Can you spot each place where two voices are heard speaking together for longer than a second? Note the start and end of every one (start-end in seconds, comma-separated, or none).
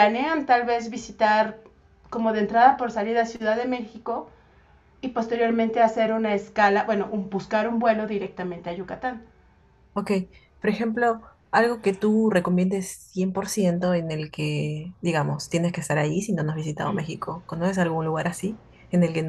none